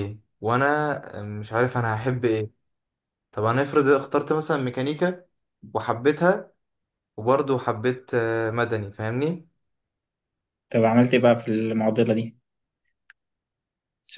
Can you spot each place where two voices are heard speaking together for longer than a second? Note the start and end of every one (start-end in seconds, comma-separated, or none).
none